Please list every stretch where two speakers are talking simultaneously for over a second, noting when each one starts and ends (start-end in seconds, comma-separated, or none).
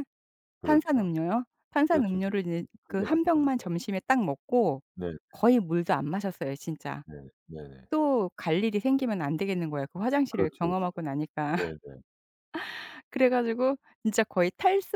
1.9-3.5